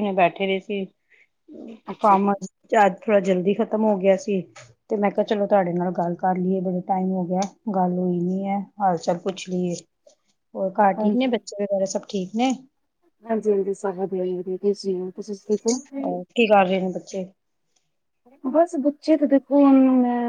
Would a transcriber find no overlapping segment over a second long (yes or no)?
yes